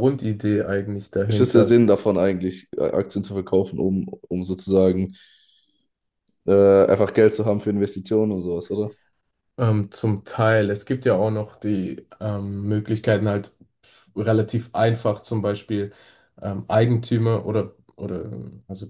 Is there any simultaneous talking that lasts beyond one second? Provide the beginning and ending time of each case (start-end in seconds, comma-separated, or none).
none